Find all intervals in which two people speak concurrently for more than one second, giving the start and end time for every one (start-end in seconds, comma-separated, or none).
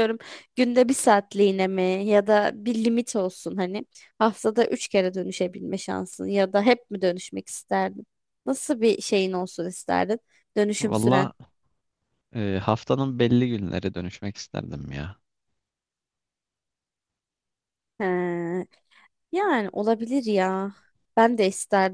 none